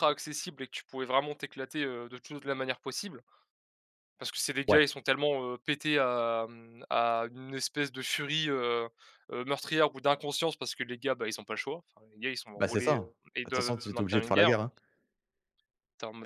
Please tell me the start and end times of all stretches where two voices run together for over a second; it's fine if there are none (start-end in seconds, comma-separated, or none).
12.6-14.6